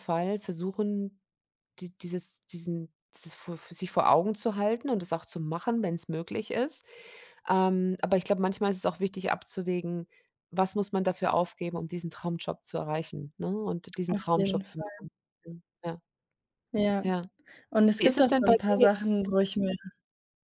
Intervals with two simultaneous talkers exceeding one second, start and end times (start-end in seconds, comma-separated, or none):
18.0-19.3